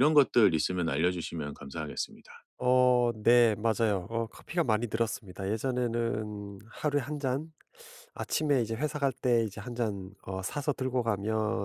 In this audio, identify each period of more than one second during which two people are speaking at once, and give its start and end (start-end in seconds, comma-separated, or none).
none